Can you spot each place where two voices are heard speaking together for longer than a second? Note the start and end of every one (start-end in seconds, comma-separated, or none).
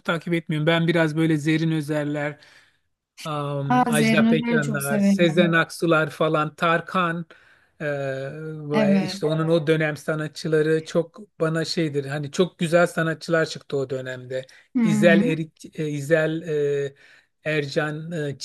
3.7-5.6